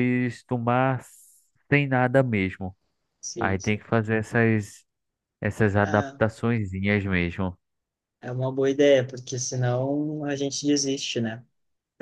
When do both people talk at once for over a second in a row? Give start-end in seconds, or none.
none